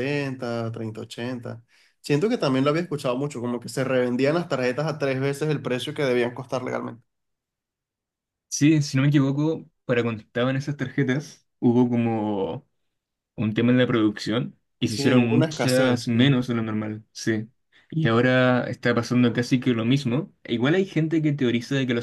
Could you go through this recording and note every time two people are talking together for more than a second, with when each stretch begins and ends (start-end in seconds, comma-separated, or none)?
14.9-16.4